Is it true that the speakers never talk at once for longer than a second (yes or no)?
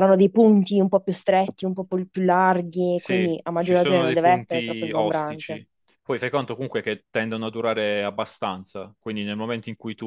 no